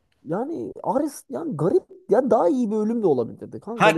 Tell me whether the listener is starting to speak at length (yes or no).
yes